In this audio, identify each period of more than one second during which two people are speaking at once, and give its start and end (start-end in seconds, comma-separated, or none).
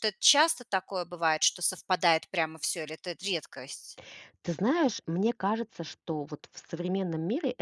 none